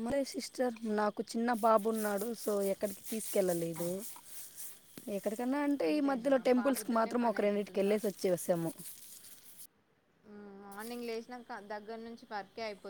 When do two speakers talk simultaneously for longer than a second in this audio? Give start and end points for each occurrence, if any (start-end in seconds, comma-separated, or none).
5.9-7.9